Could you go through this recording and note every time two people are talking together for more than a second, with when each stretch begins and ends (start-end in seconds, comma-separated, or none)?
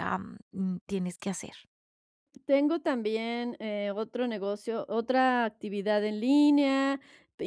none